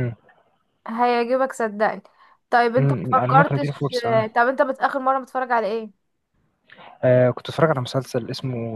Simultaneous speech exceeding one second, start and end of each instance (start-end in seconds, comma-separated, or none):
2.8-4.5